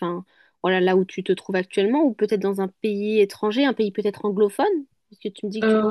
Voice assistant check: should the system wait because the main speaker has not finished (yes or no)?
no